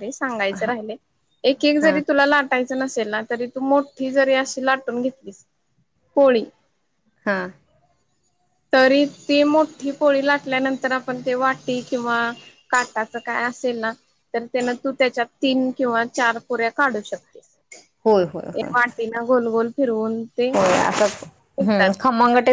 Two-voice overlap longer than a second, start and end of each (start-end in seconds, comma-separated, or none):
none